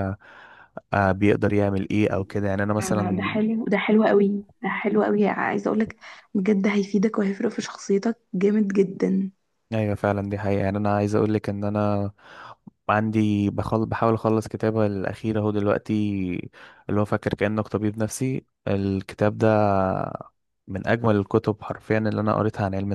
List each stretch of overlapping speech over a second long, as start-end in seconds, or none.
none